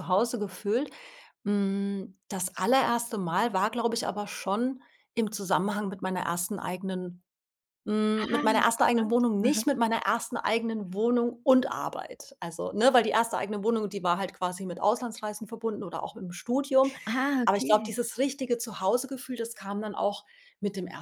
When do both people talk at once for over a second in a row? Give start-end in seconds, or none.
8.2-9.6